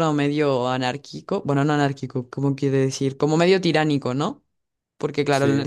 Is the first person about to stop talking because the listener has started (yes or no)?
no